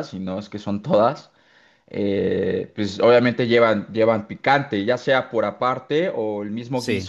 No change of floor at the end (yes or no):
yes